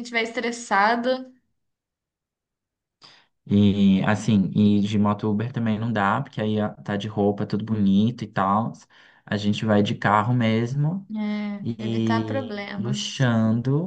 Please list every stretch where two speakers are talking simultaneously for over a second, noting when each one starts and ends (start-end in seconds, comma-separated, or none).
11.6-13.1